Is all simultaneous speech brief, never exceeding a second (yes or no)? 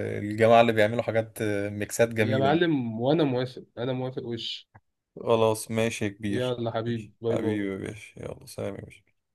no